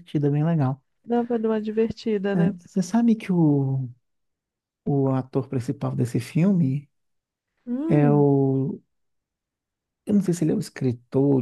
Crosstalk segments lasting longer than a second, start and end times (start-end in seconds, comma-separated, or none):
none